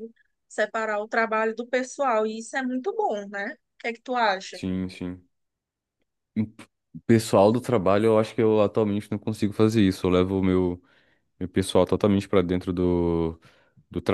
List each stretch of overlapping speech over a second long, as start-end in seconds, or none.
none